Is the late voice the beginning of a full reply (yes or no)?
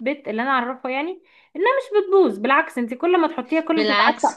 yes